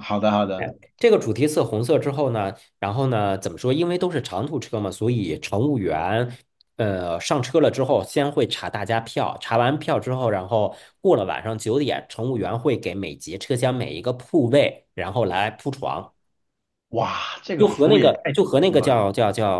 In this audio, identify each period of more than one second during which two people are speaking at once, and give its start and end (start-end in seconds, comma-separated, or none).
17.6-19.0